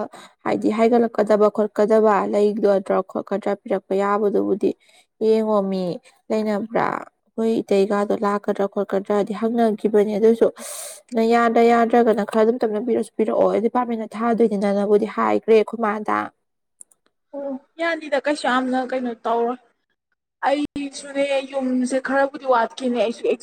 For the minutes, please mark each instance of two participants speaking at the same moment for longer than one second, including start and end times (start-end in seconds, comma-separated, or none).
none